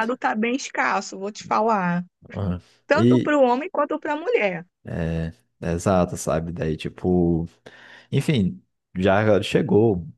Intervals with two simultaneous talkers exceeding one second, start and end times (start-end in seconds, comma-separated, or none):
none